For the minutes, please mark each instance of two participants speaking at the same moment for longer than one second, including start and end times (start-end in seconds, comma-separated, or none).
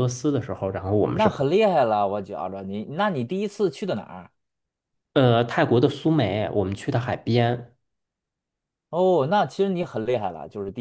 none